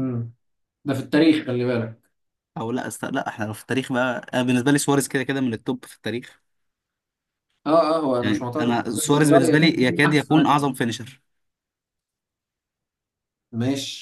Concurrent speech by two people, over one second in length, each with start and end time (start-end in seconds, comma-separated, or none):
8.2-10.6